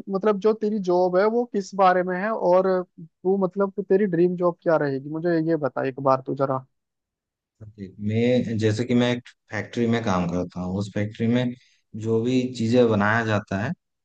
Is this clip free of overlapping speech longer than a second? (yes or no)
yes